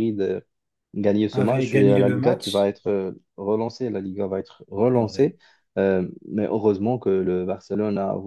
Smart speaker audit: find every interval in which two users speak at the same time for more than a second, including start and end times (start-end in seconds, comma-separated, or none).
1.3-2.7